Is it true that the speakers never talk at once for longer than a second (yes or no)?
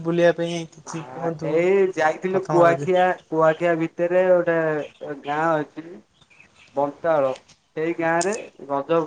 yes